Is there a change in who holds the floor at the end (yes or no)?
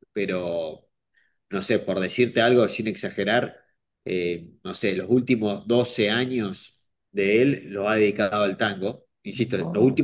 no